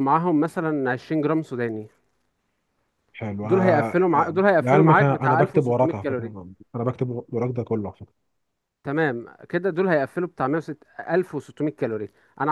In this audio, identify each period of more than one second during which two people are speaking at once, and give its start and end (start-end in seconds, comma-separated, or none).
3.4-6.3